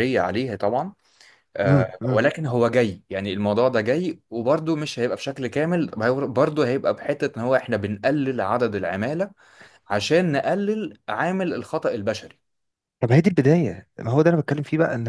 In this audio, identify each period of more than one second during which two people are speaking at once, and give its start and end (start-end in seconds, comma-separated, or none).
none